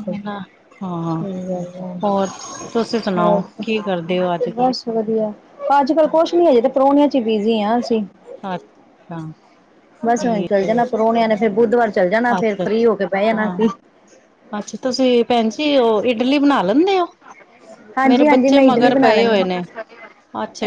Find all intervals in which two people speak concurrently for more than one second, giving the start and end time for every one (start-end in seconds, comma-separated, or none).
12.4-13.7